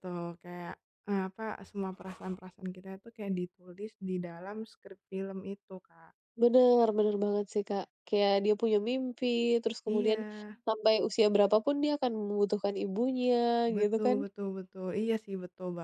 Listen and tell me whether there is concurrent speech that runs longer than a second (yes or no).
no